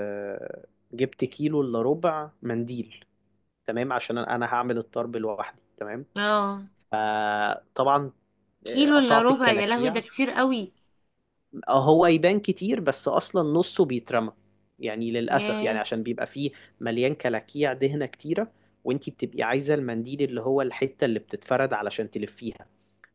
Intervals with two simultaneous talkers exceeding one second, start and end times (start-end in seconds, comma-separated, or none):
8.7-10.0